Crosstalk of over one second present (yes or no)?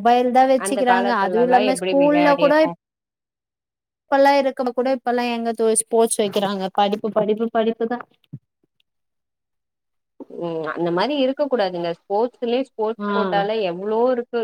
yes